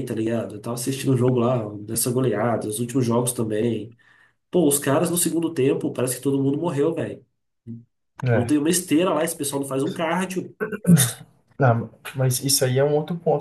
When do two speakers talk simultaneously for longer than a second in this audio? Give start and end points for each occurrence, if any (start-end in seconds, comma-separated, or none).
none